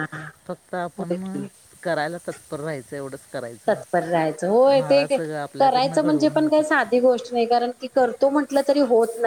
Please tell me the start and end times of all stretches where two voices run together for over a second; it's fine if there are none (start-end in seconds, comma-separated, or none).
5.4-6.9